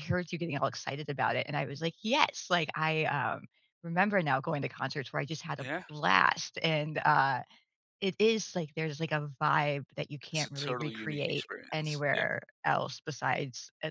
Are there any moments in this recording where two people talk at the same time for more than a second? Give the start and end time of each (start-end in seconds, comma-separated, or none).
10.3-12.2